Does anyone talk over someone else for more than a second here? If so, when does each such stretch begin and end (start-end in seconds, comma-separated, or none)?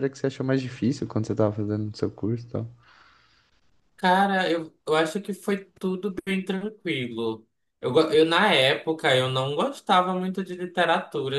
none